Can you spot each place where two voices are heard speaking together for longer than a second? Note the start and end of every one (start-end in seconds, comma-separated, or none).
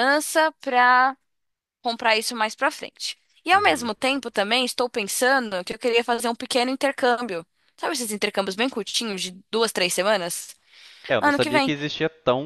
none